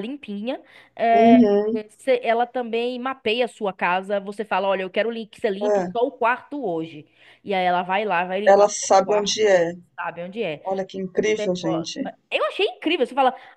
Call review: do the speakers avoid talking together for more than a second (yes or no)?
no